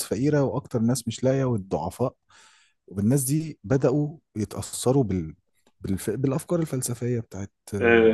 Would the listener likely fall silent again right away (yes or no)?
no